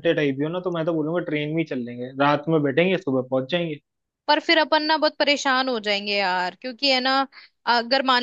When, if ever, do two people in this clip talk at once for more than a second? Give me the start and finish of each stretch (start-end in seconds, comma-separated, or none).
none